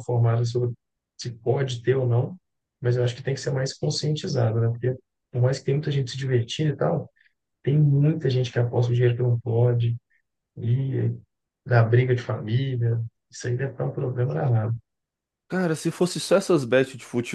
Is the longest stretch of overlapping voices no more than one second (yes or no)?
yes